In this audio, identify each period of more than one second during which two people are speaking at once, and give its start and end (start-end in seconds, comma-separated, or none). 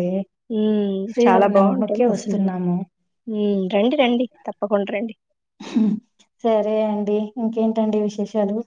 1.1-2.4